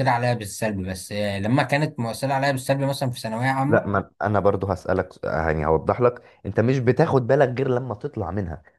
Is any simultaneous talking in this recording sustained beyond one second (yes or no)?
no